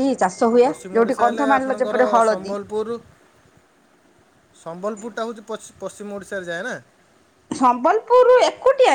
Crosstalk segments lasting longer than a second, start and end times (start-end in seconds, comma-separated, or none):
0.6-2.6